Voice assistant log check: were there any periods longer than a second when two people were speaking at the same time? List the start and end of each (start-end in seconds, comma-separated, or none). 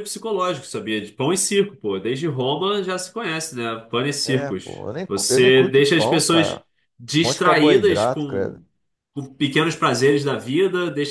4.2-6.6, 7.2-8.6